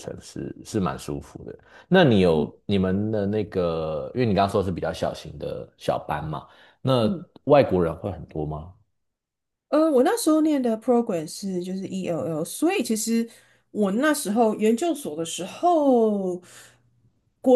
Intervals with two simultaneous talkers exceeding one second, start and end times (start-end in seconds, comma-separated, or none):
none